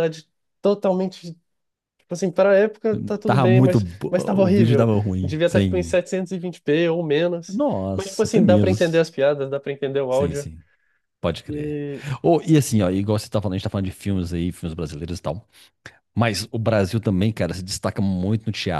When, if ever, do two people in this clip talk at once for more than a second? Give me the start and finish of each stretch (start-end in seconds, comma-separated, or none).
3.2-6.0, 7.5-9.0